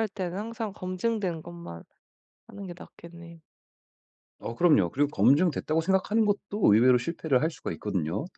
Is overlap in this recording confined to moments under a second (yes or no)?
yes